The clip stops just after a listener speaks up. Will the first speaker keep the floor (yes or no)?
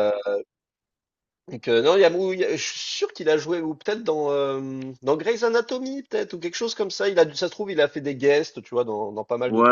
no